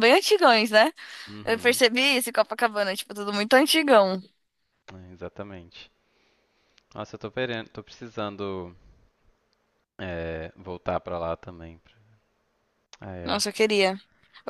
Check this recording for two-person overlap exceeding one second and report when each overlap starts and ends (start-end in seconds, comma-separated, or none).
none